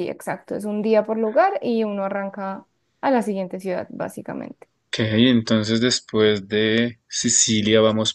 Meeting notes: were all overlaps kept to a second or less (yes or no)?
yes